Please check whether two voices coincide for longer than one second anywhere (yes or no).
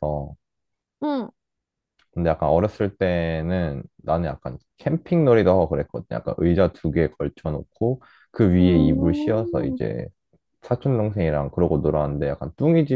yes